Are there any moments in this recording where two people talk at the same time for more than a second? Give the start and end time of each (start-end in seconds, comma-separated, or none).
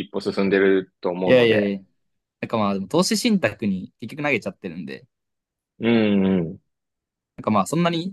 none